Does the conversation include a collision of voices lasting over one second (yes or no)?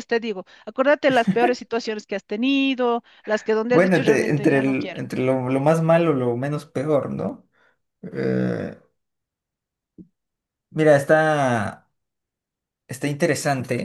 yes